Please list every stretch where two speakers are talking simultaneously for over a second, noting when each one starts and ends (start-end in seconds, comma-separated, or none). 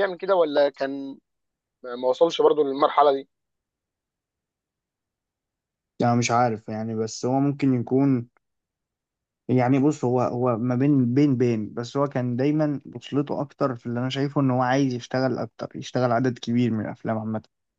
none